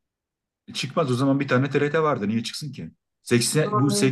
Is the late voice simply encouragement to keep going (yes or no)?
yes